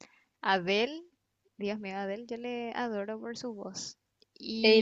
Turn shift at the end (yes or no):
yes